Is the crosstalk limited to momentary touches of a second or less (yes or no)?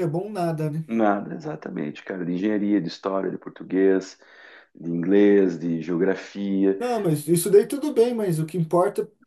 yes